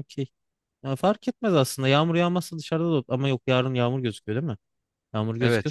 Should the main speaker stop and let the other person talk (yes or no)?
yes